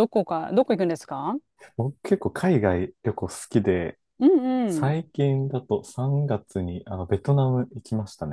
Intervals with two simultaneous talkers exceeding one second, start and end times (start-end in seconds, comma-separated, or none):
none